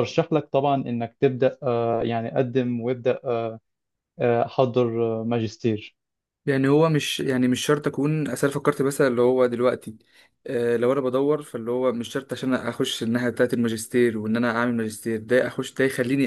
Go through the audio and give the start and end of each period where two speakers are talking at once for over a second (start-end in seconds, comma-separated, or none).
none